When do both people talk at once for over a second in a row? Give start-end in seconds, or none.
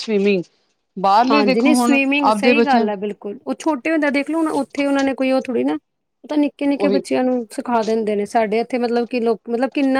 1.3-2.9